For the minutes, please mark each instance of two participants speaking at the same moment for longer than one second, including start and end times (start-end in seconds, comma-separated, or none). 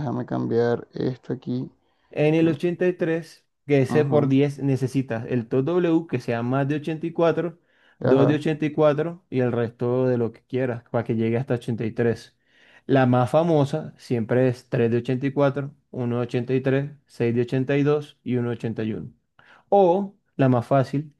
none